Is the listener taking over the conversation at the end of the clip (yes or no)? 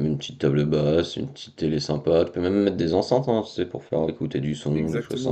yes